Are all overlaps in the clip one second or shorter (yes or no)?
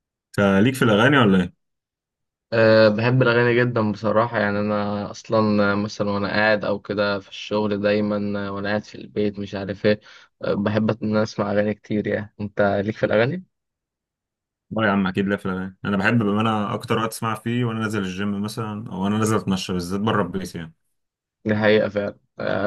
yes